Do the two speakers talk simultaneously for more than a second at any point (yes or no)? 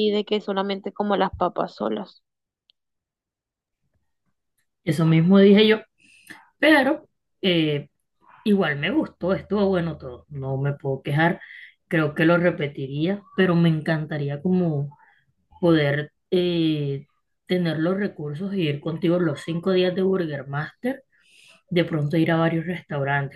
no